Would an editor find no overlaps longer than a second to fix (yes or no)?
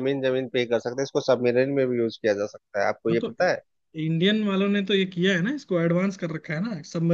yes